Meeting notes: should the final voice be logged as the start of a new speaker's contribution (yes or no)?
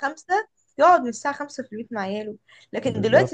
no